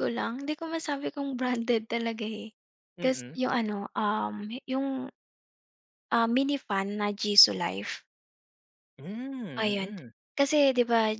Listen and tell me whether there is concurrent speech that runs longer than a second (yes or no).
no